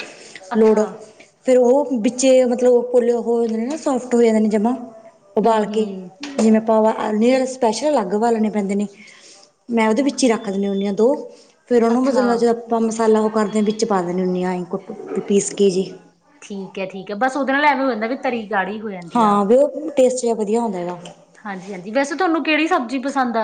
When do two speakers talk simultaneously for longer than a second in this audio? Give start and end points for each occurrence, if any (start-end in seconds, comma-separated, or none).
none